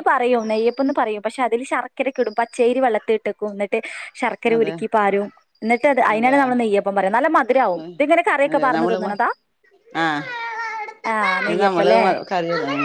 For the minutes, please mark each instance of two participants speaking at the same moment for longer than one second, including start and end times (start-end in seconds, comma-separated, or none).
none